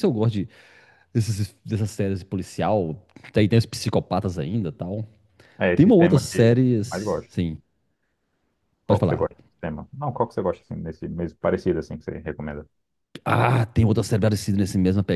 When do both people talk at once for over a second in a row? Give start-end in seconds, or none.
5.7-7.3